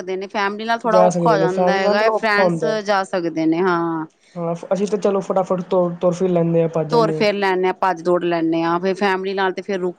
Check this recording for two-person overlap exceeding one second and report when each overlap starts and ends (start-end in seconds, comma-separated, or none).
0.9-2.8